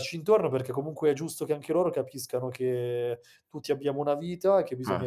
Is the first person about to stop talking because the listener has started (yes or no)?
no